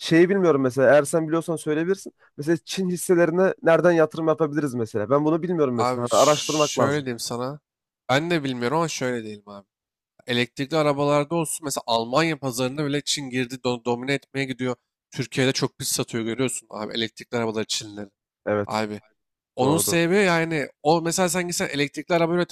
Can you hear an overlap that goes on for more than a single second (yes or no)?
yes